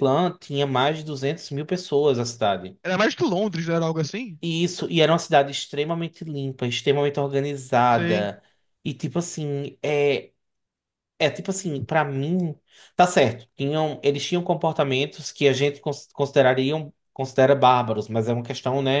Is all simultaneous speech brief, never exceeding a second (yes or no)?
yes